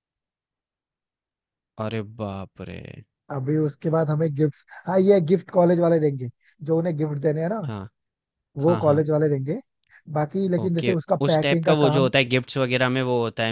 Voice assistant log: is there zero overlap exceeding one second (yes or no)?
no